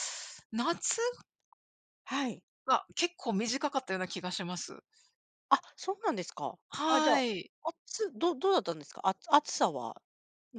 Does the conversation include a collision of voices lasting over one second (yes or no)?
no